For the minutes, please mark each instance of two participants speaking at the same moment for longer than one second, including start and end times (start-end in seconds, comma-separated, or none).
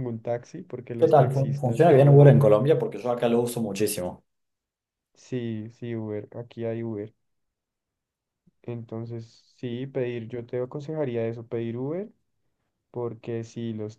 1.0-2.3